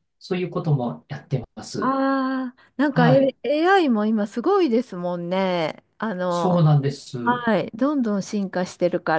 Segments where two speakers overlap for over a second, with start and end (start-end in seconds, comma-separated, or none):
none